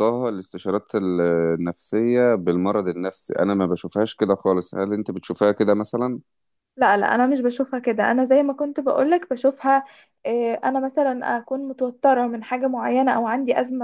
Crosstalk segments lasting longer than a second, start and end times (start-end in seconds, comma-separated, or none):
none